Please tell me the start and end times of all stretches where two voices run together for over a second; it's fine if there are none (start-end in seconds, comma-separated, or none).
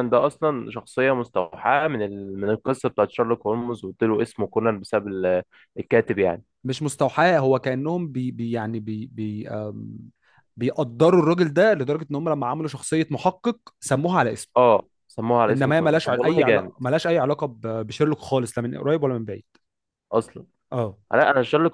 15.5-16.7